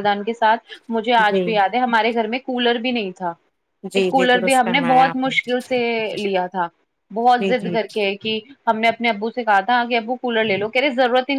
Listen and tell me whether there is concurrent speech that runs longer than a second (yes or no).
yes